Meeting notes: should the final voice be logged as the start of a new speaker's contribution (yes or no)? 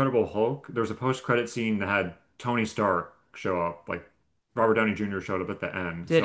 no